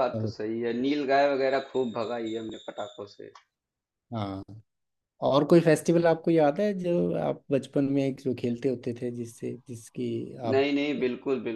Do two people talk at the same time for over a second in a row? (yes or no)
no